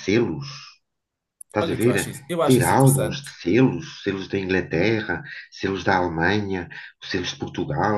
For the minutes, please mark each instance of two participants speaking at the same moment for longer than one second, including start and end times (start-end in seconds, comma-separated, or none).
1.6-3.3